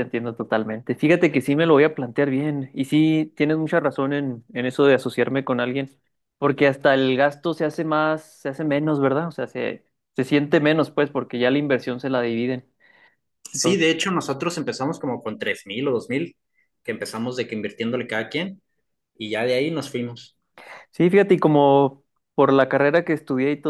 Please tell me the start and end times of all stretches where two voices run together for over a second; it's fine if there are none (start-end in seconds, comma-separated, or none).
none